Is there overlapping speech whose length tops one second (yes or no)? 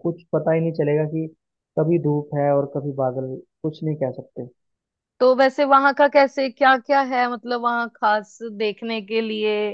no